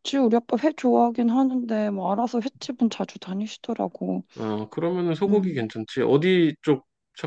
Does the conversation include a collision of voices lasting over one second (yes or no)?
no